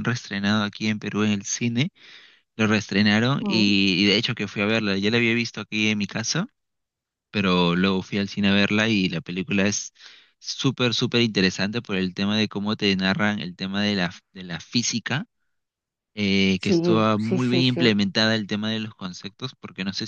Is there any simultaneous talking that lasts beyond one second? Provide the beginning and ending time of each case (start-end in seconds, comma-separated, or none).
16.6-17.9